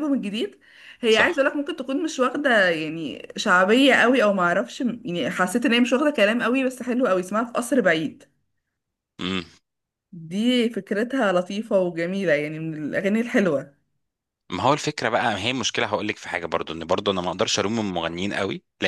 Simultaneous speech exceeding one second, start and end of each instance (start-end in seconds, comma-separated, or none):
none